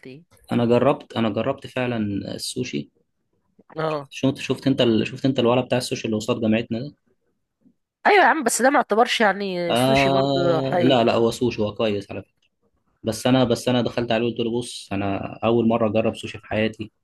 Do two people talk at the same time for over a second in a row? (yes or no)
yes